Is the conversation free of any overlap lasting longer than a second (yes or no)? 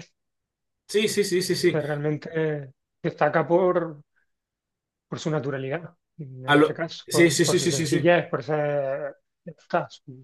no